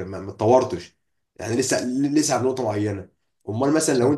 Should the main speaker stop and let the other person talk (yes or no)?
no